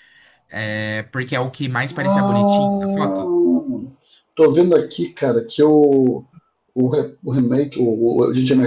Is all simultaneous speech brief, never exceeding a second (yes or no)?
no